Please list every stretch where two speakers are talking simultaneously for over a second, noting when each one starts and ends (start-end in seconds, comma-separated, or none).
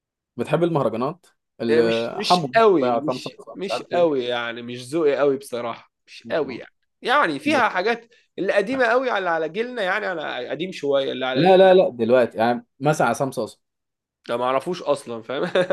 1.7-4.3